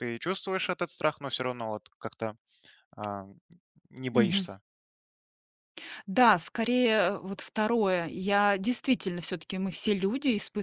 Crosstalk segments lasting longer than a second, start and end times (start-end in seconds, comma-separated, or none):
none